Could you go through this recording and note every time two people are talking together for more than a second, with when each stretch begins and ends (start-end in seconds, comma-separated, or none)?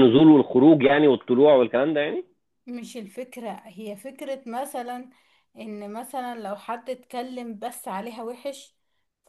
none